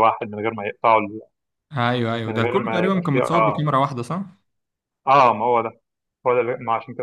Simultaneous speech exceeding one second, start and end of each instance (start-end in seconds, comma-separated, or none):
2.3-3.6